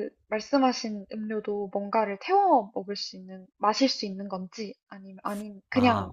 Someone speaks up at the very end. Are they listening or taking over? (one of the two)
taking over